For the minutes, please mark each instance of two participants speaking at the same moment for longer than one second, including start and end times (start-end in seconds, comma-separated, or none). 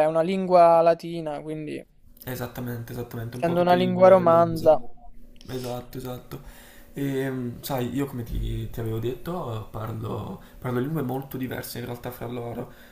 3.3-4.8